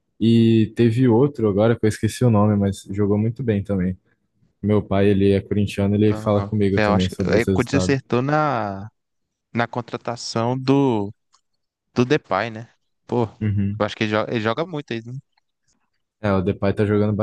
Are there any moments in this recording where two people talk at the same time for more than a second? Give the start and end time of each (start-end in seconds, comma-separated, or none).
6.1-8.0